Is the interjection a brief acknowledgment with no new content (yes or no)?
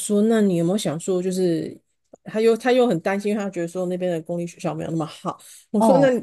yes